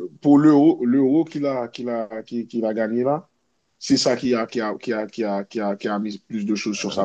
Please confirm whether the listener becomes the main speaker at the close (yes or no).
yes